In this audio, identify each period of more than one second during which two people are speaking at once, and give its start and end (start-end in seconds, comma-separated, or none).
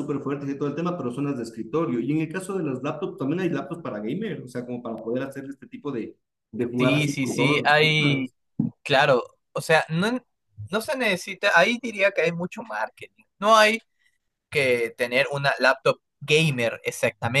6.8-8.3